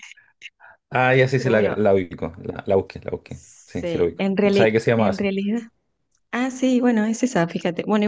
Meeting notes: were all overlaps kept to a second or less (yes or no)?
no